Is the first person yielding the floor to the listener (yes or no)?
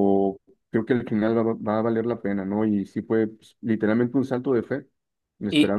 yes